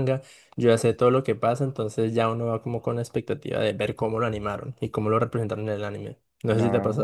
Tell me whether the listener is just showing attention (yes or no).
no